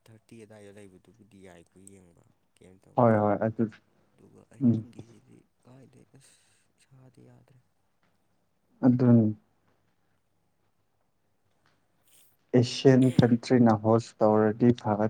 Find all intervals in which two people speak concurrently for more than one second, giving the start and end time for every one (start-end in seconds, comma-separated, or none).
none